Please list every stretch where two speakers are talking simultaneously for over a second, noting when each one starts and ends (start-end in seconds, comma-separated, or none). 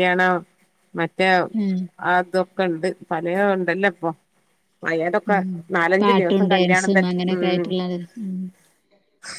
6.0-7.7